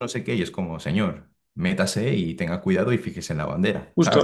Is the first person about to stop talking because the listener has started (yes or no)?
yes